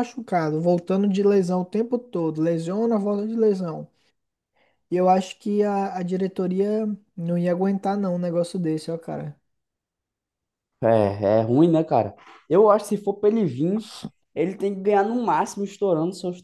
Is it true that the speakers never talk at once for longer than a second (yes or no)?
yes